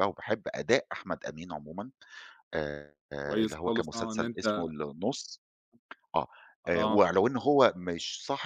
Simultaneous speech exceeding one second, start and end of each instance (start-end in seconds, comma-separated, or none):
3.2-4.7